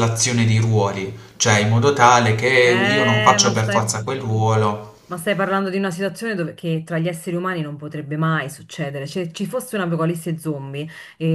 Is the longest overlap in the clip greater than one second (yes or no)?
yes